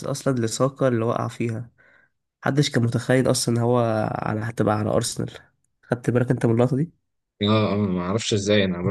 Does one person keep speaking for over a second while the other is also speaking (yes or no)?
no